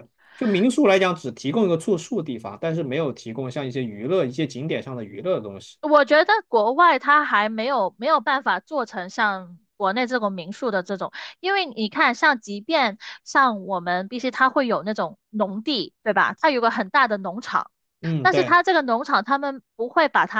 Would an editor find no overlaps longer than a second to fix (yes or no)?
yes